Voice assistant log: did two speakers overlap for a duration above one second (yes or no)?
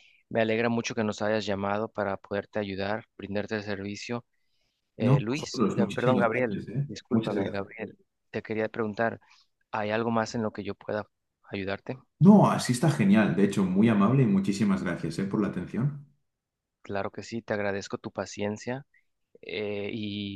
yes